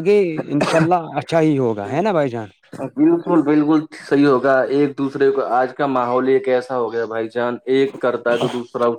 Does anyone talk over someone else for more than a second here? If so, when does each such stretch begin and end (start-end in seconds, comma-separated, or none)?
none